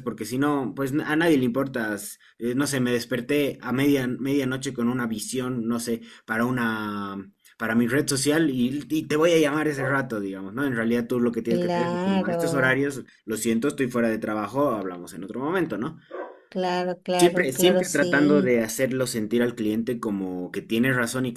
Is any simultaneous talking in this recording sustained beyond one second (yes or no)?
yes